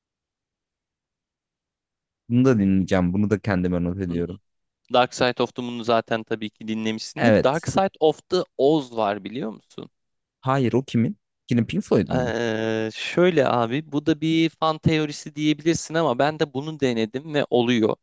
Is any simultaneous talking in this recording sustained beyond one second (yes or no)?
no